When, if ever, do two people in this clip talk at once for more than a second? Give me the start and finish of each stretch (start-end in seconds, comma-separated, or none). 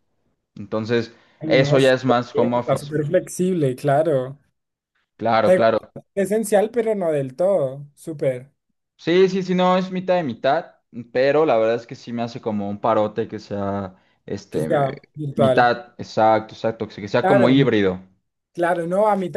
1.4-2.9